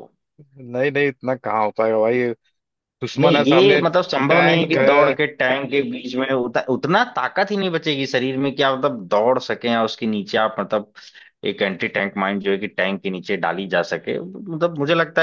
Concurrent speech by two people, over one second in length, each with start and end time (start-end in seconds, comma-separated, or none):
3.2-5.2